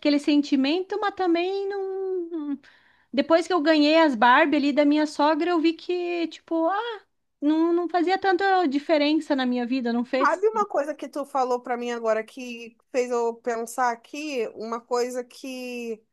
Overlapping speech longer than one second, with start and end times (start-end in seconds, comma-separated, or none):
none